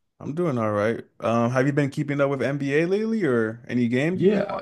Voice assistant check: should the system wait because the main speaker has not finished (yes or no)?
no